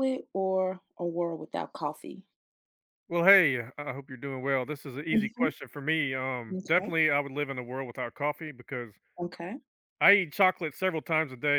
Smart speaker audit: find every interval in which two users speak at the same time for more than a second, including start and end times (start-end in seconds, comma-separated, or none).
none